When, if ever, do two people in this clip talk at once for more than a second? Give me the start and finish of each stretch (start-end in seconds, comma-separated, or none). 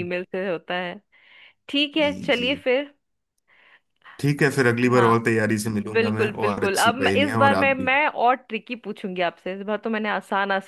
5.9-7.9